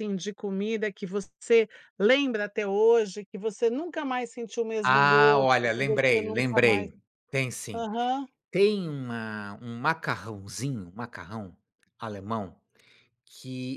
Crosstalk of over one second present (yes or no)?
yes